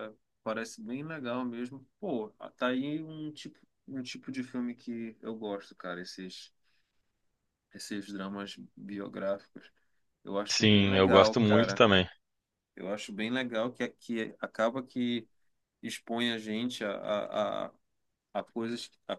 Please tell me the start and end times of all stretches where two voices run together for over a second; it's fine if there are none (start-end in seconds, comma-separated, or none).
10.5-11.8